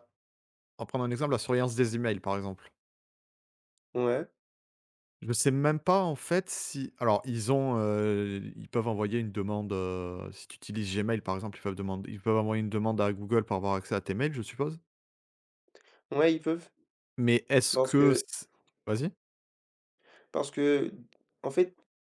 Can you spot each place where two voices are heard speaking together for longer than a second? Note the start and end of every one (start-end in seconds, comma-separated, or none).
none